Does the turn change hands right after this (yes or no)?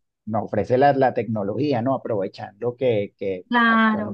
yes